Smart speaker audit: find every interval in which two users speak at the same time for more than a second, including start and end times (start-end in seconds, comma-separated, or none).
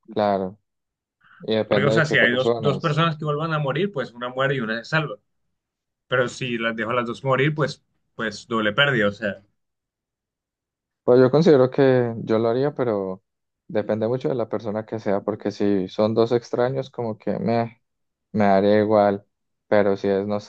1.6-3.0